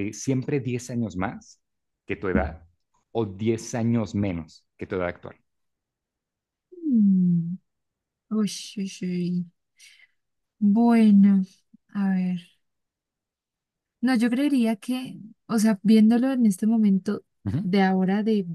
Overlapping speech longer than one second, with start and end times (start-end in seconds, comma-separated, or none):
none